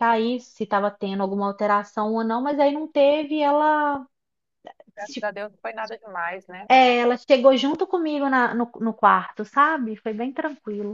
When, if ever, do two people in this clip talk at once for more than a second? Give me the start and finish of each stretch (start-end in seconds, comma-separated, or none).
none